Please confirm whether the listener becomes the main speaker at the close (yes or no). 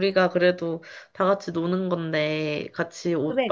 no